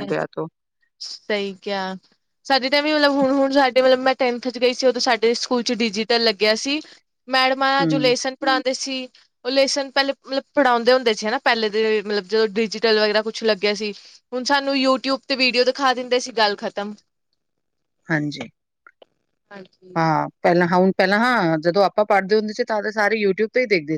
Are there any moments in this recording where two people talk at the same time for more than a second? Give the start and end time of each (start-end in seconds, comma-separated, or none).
none